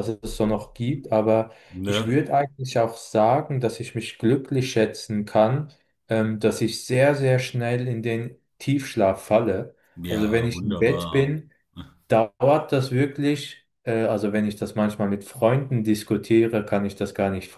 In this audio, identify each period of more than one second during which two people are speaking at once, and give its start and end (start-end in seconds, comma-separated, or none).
10.1-11.4